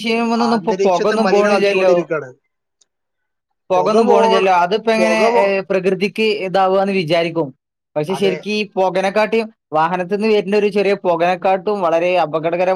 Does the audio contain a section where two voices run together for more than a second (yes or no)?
yes